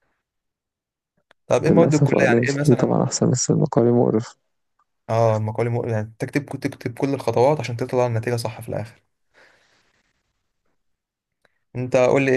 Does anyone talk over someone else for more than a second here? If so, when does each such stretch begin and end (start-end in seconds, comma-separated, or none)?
1.7-3.0